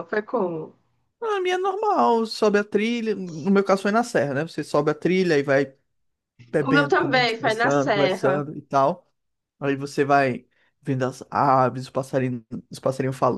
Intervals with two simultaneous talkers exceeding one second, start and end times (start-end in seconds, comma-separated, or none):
6.7-8.3